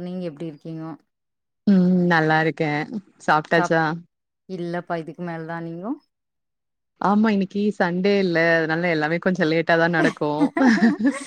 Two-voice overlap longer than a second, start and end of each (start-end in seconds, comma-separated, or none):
none